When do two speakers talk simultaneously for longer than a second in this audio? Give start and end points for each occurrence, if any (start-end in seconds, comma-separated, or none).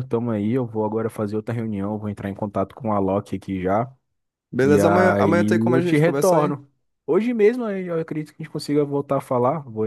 4.6-6.6